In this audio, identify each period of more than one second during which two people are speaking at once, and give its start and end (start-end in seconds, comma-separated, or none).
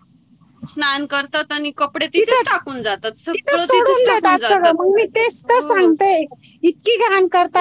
2.2-4.7